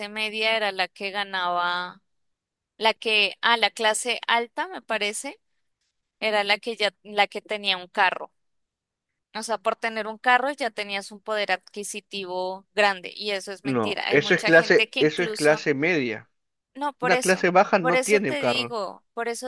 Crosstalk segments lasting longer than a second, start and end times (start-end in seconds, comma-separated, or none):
13.6-15.7, 17.0-18.8